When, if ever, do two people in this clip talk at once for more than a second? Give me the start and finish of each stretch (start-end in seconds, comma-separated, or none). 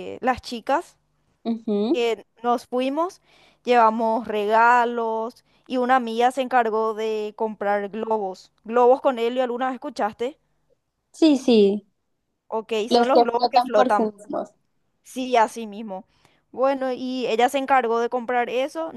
12.9-14.1